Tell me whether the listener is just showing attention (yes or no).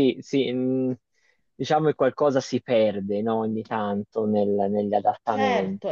no